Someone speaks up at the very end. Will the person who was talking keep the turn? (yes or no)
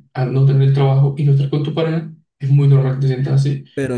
no